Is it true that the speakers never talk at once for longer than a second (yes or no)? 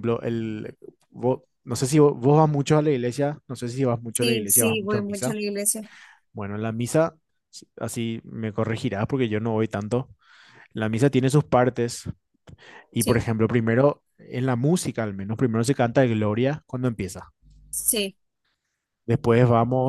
no